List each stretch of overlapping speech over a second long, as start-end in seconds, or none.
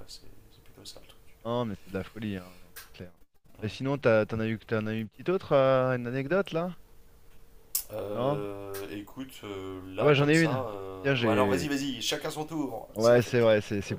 10.0-11.7